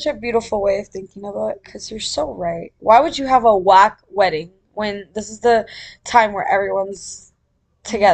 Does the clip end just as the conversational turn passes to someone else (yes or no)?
yes